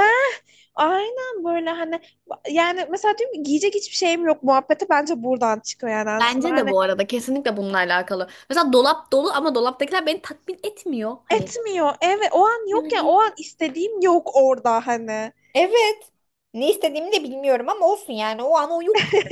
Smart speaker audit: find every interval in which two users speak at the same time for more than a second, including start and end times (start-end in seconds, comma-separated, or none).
none